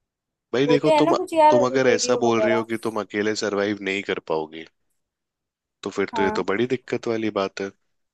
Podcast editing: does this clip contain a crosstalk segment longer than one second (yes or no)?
yes